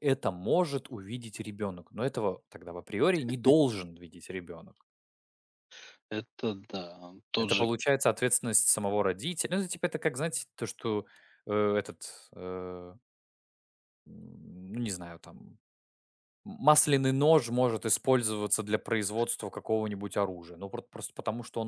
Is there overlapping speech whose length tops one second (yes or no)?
no